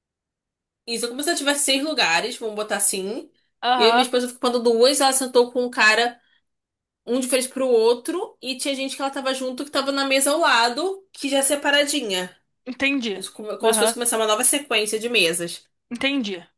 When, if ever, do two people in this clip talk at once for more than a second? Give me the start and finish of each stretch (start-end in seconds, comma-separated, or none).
none